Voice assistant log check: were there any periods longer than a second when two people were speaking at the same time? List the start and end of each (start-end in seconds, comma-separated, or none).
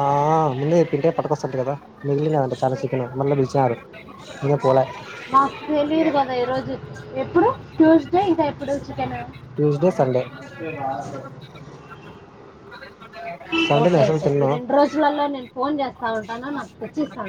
none